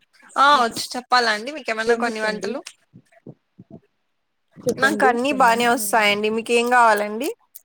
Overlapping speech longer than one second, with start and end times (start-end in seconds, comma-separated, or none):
4.8-6.5